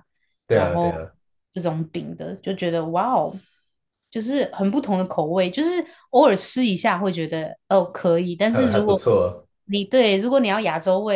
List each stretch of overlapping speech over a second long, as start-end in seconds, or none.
none